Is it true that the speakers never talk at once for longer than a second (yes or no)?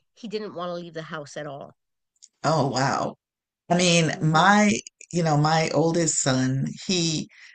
yes